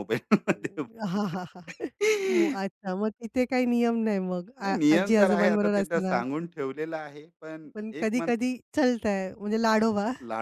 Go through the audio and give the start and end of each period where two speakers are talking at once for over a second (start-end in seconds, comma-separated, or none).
4.6-6.2